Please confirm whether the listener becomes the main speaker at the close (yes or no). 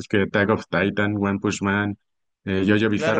yes